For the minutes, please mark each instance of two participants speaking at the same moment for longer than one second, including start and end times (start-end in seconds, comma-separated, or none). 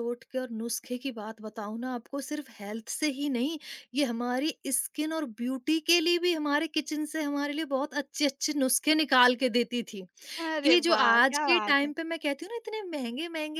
10.6-11.9